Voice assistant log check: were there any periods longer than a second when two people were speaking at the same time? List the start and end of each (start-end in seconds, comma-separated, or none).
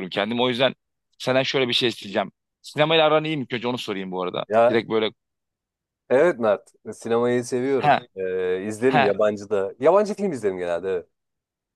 none